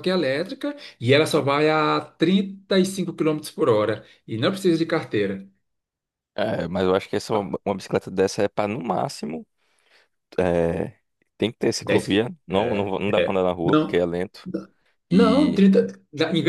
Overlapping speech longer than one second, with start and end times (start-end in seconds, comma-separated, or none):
11.8-14.1